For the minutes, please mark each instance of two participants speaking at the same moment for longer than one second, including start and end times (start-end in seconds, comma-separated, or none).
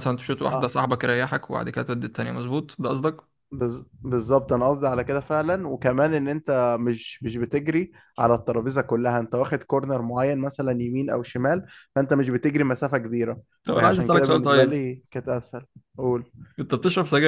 13.6-14.9